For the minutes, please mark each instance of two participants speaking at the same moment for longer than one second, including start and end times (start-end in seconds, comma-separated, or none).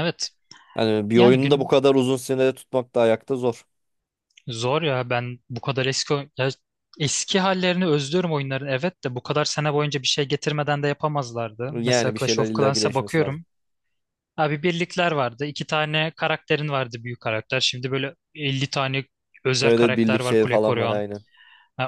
11.7-13.4, 19.6-21.0